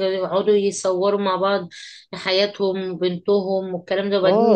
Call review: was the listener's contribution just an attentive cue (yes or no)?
no